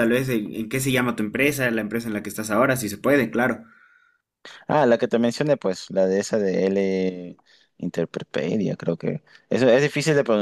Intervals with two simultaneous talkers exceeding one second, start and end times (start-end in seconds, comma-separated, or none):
none